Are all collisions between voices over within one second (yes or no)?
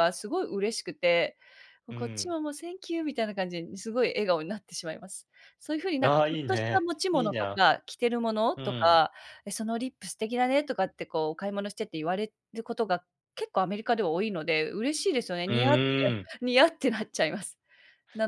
no